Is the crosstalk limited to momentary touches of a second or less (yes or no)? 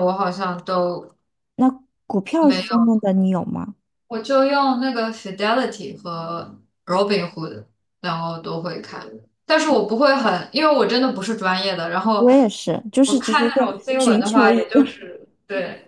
no